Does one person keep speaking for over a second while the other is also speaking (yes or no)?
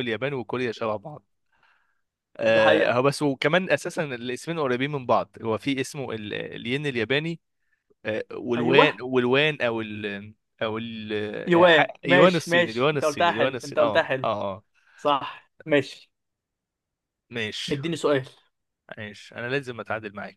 yes